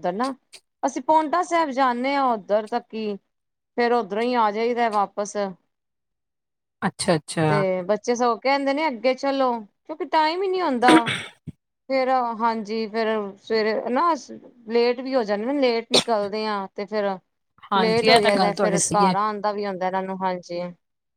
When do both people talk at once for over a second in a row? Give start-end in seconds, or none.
17.8-19.1